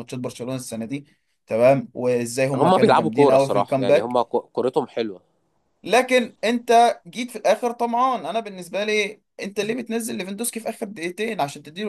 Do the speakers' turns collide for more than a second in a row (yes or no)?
yes